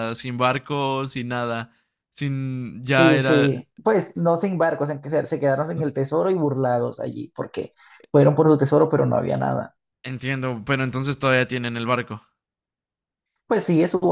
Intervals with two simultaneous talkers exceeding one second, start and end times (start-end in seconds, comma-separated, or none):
none